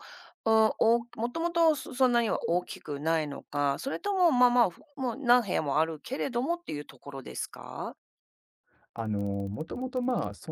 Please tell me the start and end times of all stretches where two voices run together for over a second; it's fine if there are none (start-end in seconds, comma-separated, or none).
none